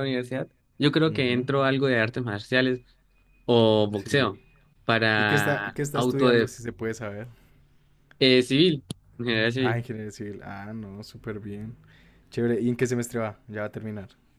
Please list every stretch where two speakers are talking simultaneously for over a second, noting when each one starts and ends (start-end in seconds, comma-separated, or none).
5.2-6.5